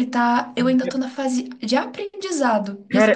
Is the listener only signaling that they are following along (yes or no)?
no